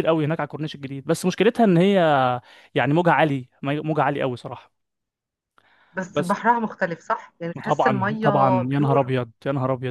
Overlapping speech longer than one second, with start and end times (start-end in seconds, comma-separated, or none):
7.6-9.0